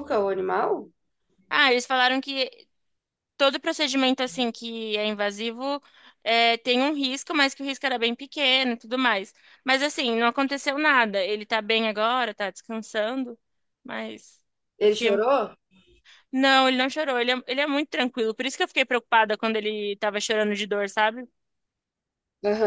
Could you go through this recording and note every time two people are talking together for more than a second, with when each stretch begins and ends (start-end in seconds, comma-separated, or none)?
none